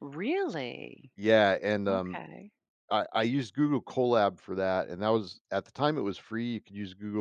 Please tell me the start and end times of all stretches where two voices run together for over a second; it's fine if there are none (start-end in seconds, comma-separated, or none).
none